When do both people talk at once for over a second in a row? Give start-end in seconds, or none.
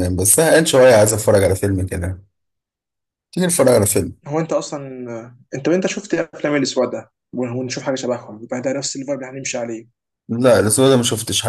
none